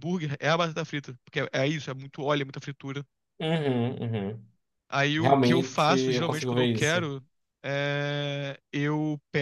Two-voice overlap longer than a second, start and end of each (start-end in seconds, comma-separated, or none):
5.2-7.1